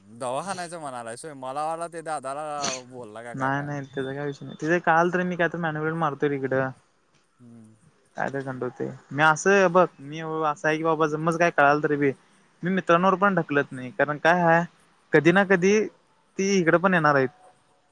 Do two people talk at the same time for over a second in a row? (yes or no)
no